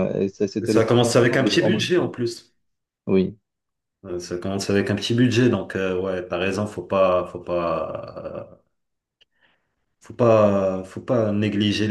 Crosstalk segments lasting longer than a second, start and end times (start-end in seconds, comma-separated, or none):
0.6-1.9